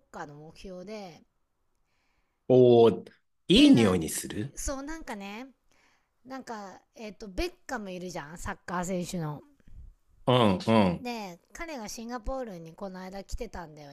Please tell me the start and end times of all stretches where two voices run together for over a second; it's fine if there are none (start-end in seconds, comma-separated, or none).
none